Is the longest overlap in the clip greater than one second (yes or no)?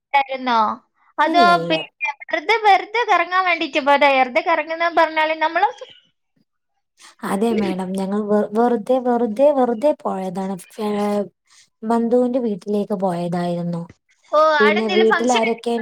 no